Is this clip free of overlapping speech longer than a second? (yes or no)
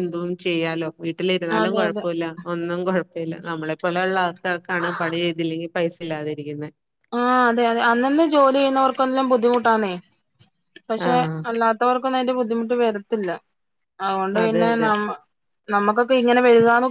yes